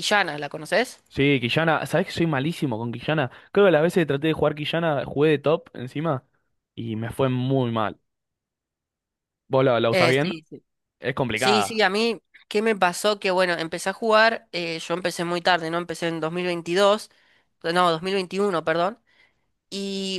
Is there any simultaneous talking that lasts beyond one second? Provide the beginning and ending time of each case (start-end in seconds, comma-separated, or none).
none